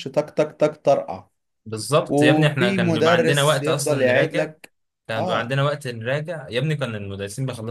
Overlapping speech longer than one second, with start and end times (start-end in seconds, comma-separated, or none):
2.1-4.5